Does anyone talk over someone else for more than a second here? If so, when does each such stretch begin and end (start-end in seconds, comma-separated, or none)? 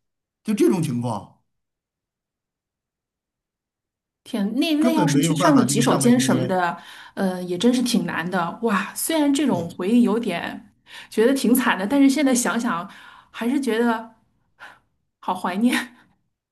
4.8-6.6